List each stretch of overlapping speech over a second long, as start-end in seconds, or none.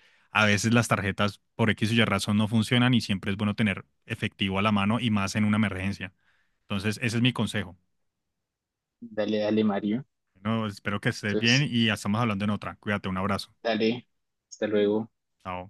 none